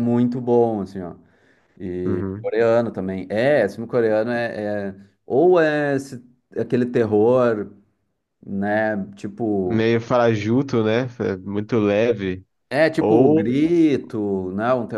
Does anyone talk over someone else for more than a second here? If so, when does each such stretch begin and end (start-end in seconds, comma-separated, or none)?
none